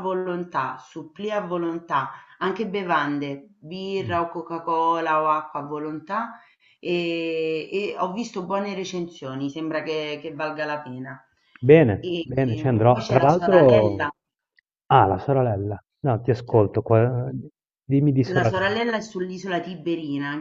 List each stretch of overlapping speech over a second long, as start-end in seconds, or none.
12.0-14.0